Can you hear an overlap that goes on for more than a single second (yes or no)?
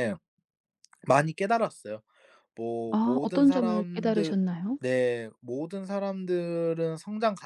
yes